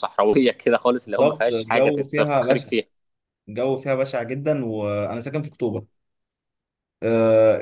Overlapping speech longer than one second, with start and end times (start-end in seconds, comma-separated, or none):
1.0-2.7